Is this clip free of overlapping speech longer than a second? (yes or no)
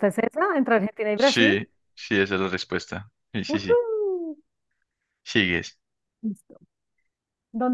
yes